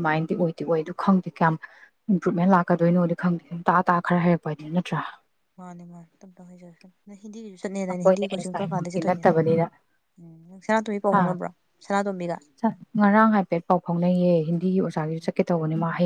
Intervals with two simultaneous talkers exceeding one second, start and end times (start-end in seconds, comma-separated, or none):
7.9-9.2